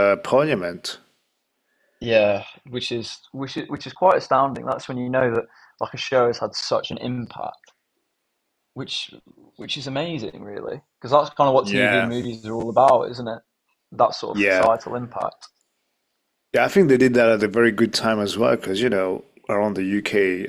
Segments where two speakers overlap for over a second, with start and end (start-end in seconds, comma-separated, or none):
none